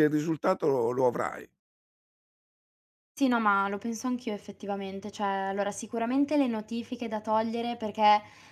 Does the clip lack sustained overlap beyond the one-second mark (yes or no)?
yes